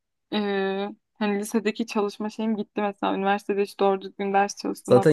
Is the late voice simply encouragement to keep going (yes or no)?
no